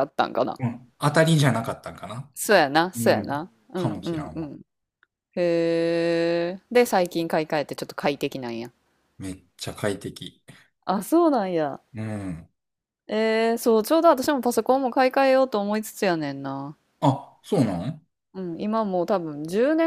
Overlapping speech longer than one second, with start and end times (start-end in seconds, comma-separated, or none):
3.0-4.5